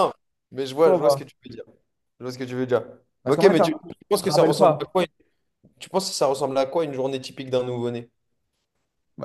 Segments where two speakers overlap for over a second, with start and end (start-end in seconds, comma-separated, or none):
3.3-4.9